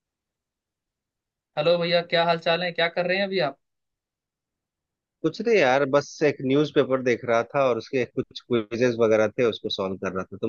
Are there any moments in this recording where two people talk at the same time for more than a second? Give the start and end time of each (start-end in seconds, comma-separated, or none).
none